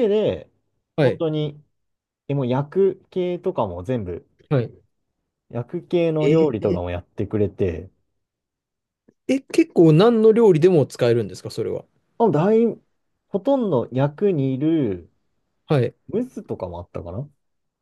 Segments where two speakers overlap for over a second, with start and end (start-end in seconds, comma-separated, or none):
none